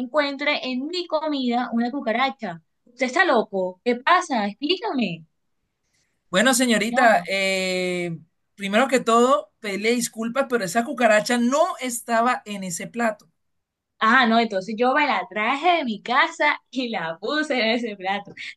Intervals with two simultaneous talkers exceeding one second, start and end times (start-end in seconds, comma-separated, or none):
none